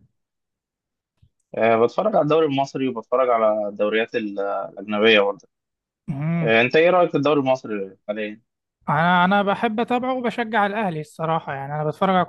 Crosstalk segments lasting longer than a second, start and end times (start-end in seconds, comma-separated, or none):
none